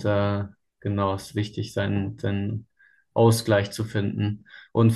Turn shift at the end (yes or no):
no